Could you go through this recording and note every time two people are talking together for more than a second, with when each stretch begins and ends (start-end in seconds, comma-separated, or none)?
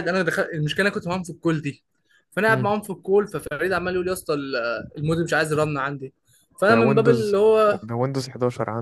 none